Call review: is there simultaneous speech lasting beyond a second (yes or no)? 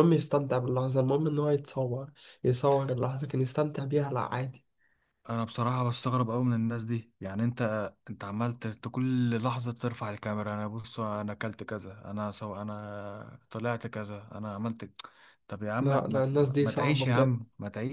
yes